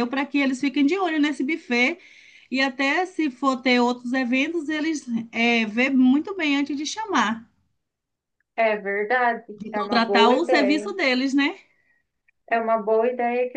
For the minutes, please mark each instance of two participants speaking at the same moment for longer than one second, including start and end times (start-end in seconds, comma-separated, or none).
9.6-10.9